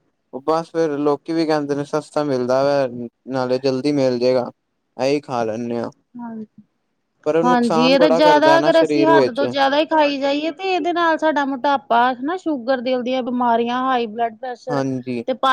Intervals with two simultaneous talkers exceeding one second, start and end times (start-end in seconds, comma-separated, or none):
8.0-9.4